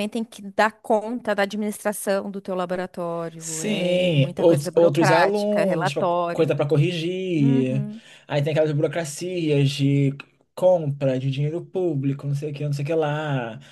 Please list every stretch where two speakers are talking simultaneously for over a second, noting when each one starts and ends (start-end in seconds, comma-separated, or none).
3.4-6.5